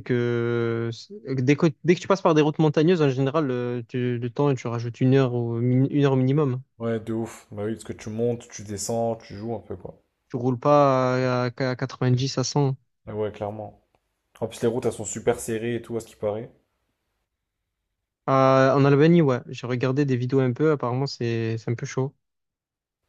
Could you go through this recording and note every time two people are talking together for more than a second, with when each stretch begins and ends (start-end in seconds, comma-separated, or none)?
none